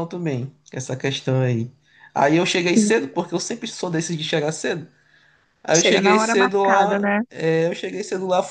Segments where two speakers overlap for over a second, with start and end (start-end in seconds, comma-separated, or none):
5.7-7.2